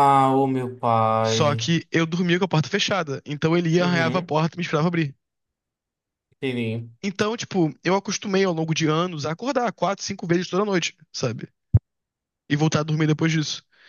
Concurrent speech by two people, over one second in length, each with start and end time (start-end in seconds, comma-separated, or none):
none